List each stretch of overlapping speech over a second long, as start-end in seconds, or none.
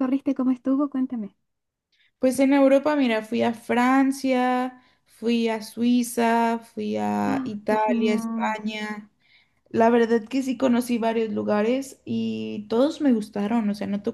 7.3-8.6